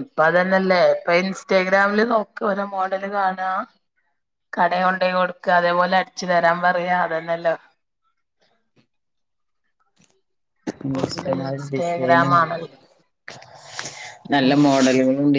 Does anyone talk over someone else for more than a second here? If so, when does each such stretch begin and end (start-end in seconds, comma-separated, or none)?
11.1-12.3